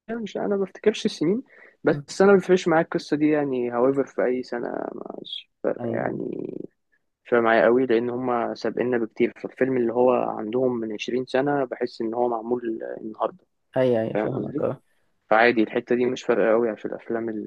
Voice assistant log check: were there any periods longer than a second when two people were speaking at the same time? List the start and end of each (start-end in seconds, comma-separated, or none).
none